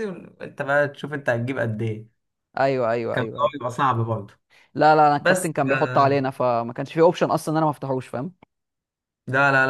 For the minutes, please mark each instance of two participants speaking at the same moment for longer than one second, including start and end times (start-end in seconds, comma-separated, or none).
none